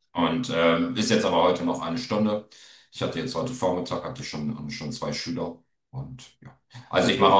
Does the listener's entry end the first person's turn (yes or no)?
no